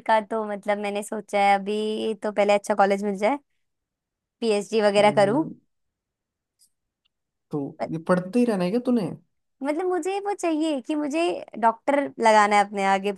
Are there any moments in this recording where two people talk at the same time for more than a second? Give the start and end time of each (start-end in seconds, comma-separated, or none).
none